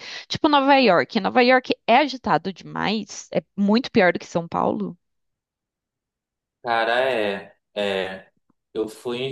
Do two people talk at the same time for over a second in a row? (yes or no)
no